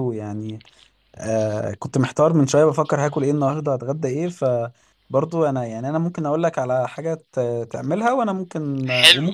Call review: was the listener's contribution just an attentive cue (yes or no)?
no